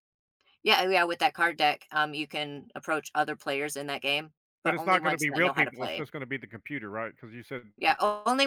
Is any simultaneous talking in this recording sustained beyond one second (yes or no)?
yes